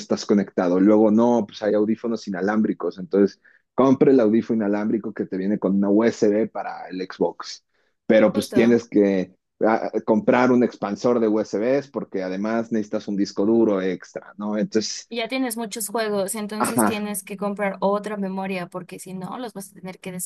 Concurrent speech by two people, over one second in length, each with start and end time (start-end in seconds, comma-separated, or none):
none